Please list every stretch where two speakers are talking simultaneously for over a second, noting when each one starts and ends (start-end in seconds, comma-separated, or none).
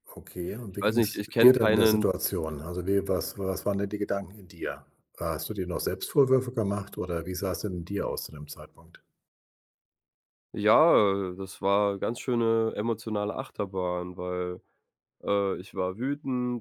0.8-2.0